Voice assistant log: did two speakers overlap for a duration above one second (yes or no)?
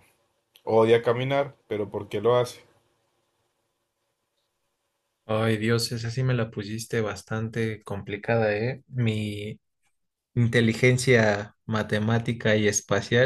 no